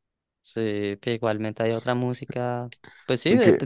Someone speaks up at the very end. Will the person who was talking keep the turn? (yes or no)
yes